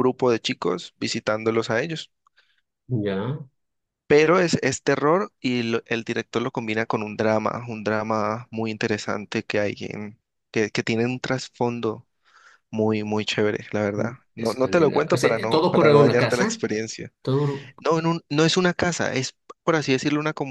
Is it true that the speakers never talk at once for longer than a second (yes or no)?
no